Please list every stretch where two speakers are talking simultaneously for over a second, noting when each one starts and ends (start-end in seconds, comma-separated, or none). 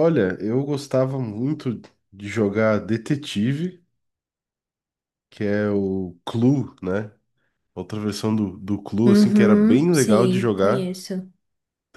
9.1-11.0